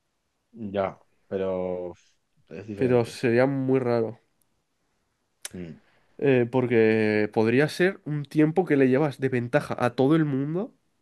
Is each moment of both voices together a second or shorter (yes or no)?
yes